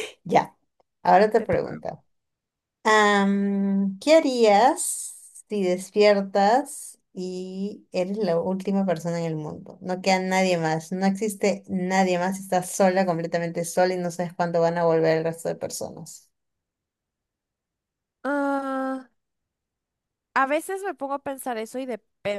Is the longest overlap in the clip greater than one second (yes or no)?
no